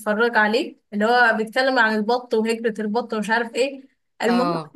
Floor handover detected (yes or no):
no